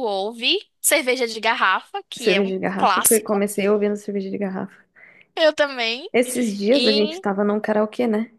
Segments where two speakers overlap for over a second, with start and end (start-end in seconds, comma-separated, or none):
2.2-3.4